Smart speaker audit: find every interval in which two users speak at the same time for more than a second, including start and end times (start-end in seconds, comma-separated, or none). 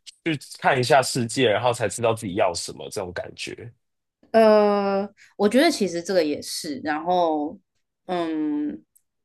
none